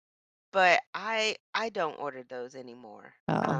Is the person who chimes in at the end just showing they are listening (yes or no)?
no